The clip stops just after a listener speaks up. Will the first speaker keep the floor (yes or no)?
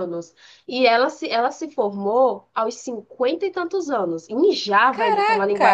yes